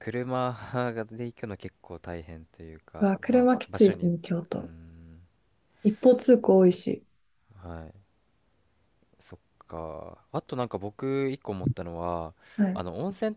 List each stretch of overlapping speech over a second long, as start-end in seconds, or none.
3.0-4.7